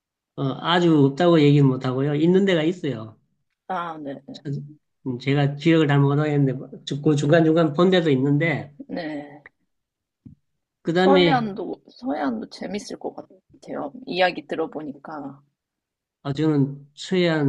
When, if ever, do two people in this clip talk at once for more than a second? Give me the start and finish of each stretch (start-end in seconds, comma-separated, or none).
none